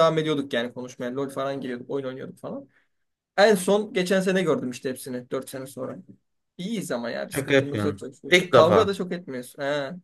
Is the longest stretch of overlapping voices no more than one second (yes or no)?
no